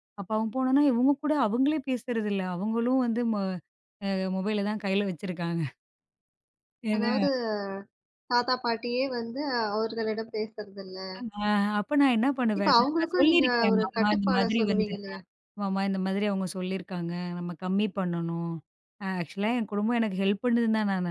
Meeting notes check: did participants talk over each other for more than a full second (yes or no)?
yes